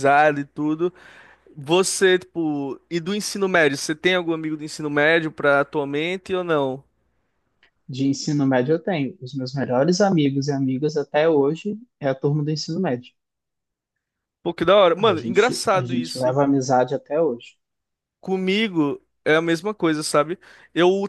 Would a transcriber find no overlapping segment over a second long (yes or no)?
no